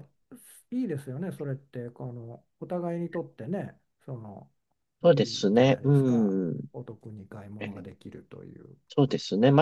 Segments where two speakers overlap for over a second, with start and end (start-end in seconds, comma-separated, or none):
5.1-6.3